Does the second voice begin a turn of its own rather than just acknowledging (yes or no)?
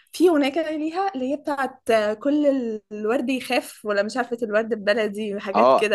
yes